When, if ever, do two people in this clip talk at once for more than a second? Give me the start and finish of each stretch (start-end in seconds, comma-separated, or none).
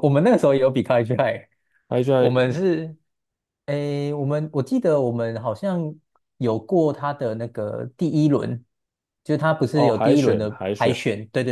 9.7-11.0